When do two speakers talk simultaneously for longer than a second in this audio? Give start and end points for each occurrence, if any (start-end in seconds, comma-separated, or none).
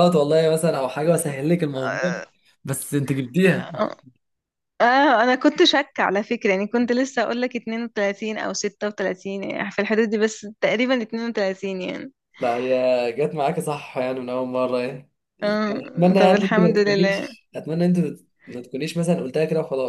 15.7-17.3